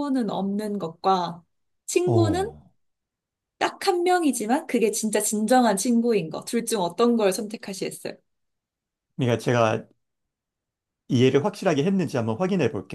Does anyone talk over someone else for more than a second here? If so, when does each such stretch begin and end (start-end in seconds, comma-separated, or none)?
none